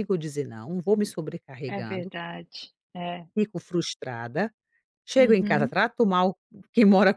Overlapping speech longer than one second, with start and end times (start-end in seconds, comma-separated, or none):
none